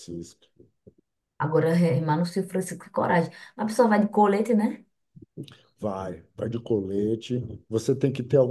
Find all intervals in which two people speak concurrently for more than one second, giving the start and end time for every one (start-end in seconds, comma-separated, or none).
none